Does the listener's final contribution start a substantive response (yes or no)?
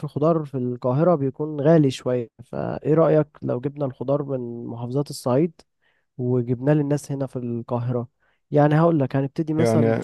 yes